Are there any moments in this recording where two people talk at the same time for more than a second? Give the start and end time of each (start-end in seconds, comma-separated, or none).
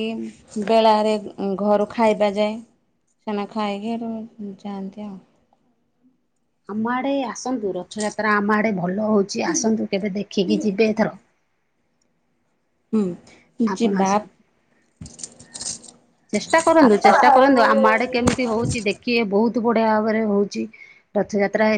17.2-18.7